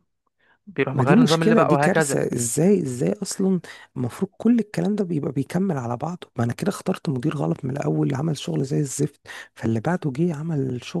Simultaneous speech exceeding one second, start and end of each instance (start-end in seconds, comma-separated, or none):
0.9-2.2